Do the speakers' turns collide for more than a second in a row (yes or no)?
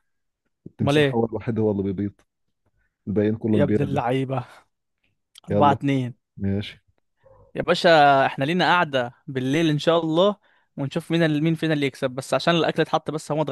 no